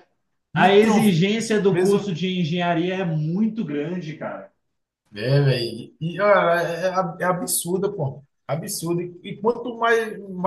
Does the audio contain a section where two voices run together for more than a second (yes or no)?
yes